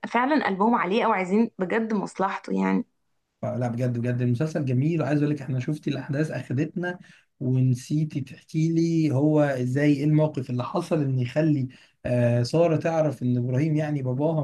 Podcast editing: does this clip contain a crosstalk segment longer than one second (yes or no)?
no